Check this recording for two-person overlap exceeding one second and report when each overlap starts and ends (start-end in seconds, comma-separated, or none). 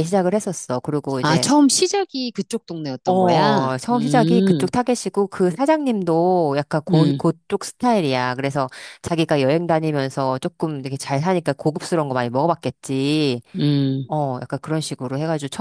3.0-4.7